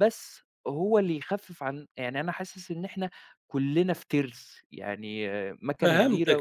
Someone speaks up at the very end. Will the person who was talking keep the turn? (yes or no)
no